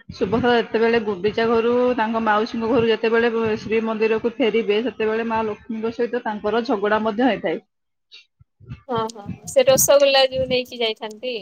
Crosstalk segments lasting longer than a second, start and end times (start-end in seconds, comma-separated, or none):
none